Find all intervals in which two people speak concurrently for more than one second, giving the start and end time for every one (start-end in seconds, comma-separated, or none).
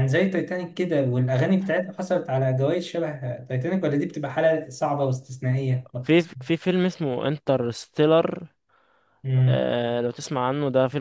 none